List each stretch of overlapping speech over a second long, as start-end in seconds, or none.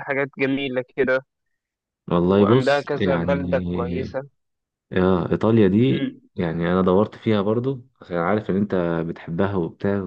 2.2-4.2